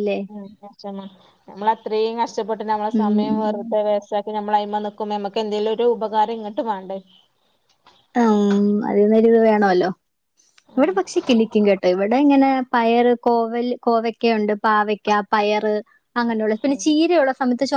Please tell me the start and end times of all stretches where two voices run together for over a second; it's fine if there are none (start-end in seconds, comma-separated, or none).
none